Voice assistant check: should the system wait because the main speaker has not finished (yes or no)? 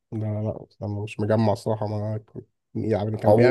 no